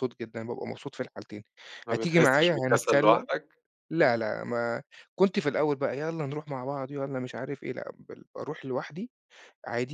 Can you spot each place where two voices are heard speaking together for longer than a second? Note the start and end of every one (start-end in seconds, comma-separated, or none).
1.9-3.3